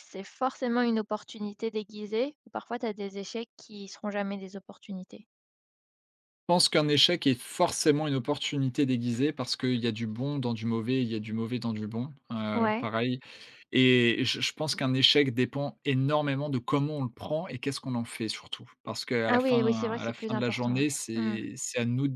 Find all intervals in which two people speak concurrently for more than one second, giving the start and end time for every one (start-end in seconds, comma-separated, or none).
19.3-21.4